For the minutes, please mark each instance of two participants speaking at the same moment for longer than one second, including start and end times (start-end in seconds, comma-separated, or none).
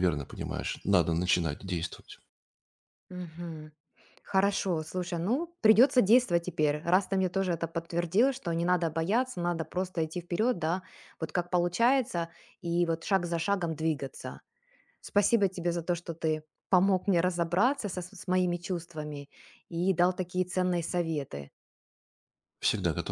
none